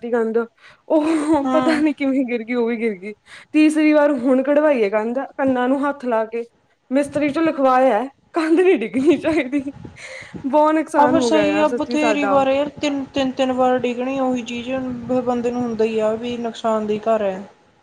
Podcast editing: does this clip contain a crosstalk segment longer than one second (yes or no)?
yes